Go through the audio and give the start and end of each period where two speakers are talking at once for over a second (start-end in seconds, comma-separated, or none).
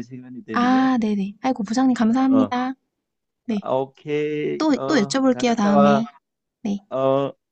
4.6-6.0